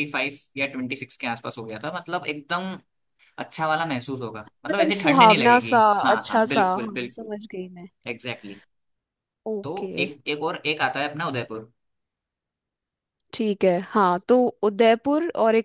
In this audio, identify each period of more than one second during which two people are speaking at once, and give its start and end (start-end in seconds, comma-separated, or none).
4.7-7.3